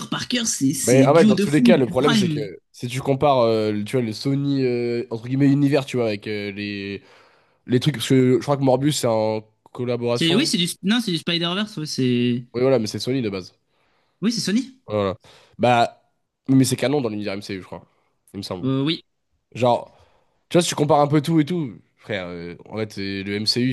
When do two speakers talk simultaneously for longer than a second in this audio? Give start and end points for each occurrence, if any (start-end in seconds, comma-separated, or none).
0.8-2.5